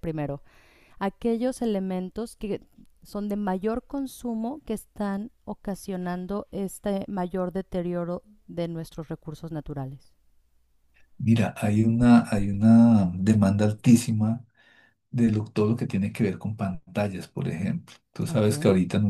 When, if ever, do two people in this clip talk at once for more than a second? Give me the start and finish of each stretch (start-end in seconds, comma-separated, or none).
none